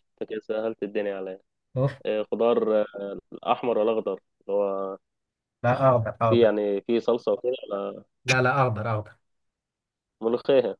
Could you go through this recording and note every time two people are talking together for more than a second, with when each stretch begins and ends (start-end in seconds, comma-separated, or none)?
none